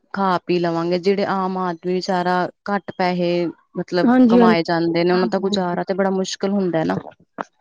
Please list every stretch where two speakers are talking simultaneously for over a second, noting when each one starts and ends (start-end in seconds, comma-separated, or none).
4.1-5.7